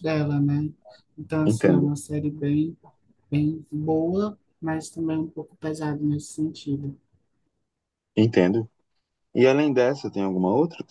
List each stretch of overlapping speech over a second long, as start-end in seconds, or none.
none